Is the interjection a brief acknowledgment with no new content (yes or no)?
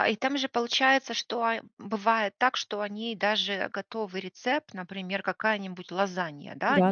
yes